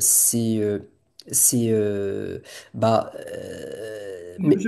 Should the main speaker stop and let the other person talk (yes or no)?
yes